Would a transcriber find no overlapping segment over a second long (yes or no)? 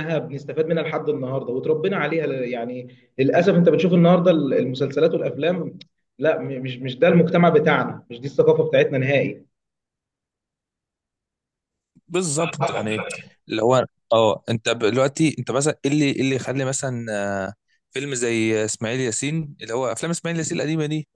yes